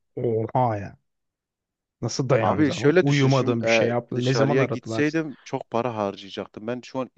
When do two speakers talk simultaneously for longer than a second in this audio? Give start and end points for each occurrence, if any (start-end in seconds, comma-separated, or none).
2.4-5.0